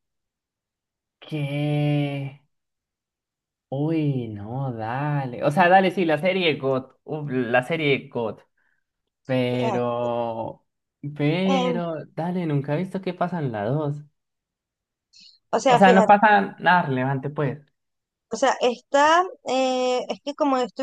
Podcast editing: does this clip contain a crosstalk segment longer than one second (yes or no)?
no